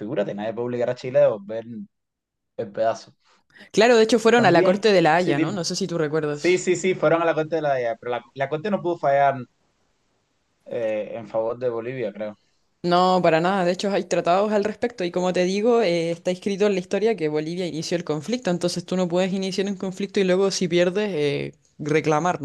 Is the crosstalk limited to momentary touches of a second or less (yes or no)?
no